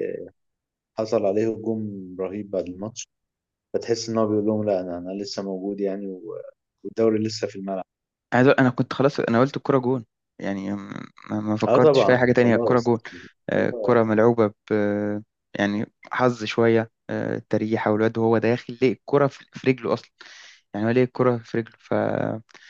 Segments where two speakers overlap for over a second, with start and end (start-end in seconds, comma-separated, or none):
11.7-12.9